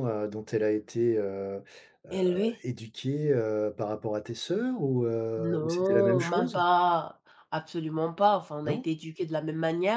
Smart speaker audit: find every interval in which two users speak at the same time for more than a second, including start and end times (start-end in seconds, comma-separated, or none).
5.4-6.6